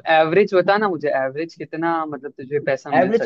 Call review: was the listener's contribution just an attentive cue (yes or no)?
no